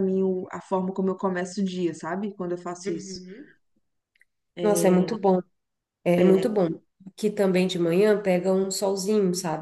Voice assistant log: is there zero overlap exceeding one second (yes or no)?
yes